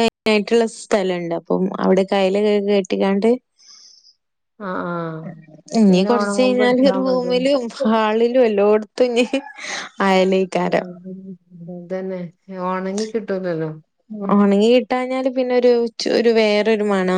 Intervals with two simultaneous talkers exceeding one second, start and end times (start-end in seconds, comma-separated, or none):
5.9-7.4